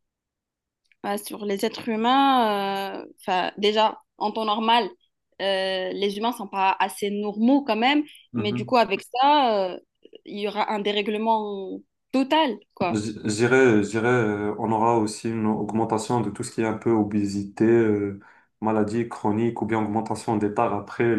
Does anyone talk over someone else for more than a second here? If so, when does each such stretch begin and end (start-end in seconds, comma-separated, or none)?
none